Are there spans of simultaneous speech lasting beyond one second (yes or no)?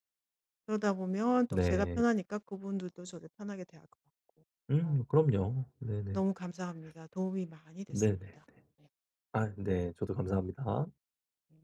no